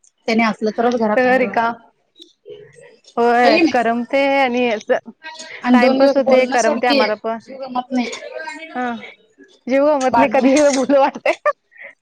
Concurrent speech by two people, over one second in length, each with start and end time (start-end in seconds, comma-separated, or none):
5.7-7.0